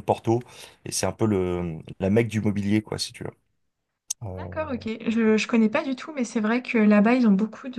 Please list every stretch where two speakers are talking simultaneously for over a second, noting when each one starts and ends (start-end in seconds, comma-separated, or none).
none